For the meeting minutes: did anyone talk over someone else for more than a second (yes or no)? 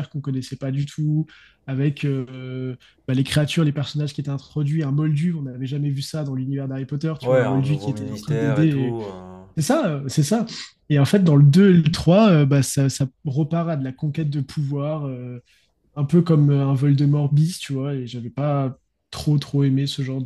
yes